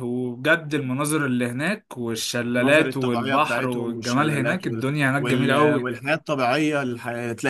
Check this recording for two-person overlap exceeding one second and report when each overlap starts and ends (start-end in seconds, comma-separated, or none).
2.6-6.0